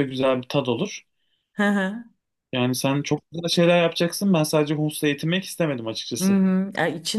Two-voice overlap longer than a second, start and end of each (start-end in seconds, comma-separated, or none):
none